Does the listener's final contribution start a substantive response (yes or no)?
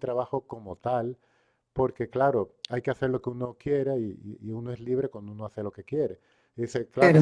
no